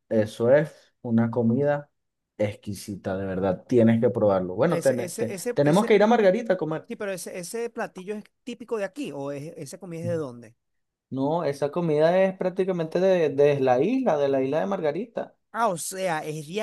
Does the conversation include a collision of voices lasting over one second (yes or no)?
yes